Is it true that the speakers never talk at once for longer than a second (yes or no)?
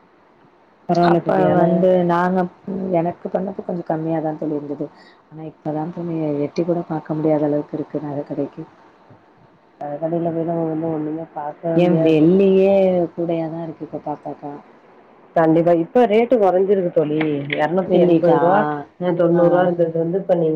yes